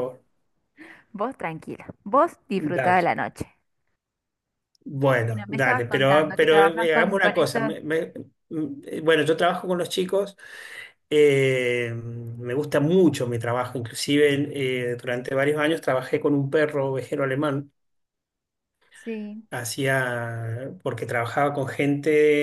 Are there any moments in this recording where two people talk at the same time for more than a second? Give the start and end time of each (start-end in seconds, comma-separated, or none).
5.2-7.6